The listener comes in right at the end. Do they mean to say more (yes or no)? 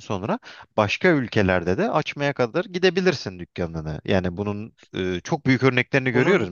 no